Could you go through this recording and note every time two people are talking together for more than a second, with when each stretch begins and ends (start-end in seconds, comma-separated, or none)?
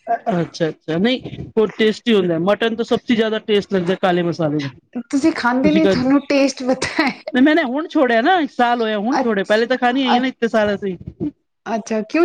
5.6-7.2